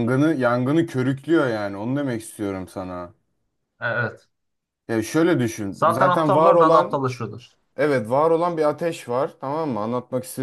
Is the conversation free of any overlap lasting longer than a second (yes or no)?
no